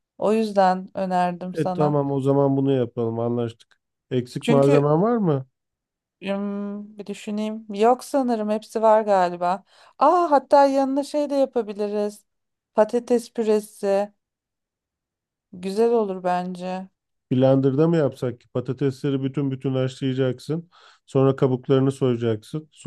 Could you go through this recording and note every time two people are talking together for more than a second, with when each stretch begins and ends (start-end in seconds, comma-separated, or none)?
none